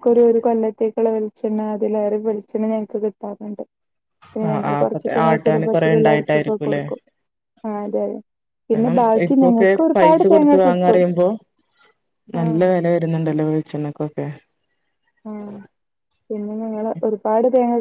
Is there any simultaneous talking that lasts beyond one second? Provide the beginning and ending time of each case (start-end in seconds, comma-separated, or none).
4.5-6.8, 8.7-11.0